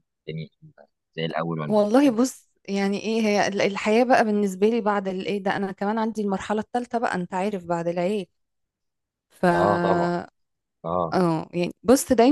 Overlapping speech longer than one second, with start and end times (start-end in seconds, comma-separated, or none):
none